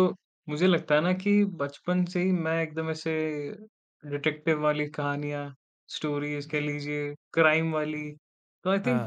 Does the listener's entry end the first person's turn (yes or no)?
no